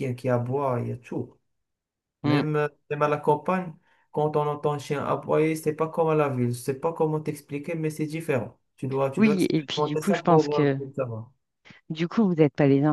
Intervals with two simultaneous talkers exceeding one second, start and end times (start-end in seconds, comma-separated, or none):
9.2-10.8